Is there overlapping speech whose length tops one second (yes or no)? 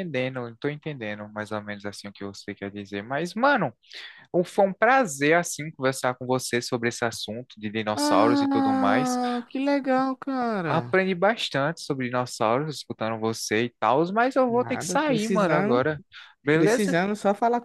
yes